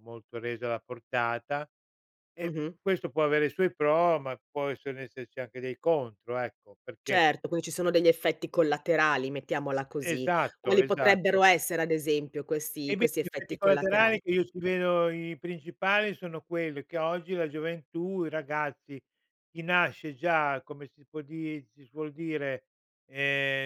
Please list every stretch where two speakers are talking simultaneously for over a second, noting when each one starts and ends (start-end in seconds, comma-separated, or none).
10.0-11.4, 12.9-14.2